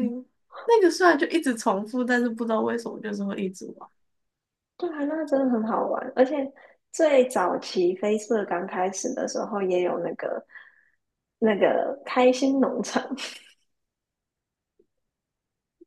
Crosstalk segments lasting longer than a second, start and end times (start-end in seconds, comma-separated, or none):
none